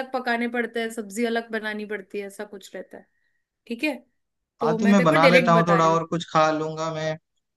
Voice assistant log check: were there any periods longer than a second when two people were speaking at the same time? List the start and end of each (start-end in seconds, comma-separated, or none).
4.6-6.0